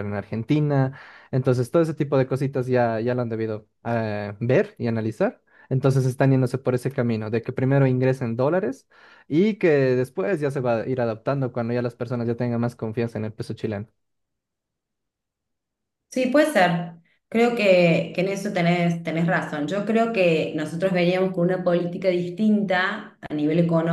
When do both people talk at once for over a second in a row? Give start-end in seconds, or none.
none